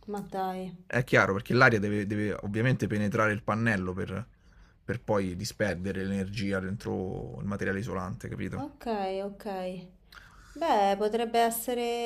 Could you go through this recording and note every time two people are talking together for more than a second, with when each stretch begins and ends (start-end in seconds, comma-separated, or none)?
none